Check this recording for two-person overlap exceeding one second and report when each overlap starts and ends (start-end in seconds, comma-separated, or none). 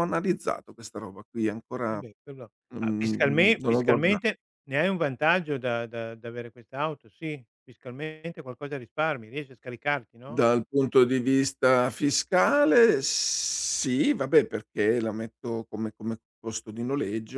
2.7-4.2